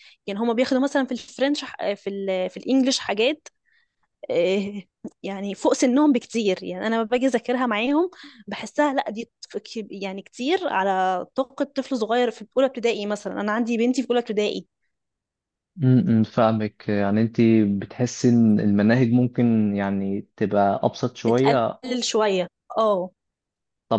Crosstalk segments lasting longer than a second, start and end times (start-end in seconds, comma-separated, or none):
none